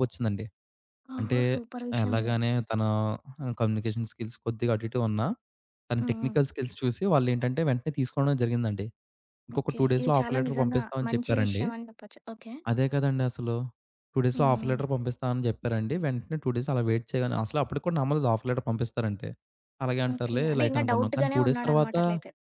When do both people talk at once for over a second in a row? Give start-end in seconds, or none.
9.6-11.6, 20.1-21.9